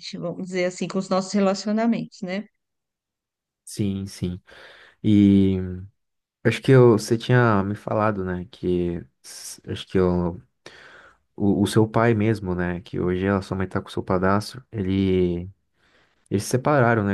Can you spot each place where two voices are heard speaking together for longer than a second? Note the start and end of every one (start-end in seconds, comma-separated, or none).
none